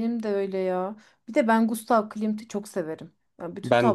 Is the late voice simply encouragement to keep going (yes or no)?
no